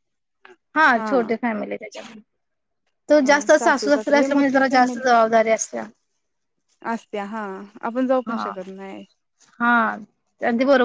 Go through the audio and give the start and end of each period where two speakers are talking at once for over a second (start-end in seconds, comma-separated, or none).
3.2-5.0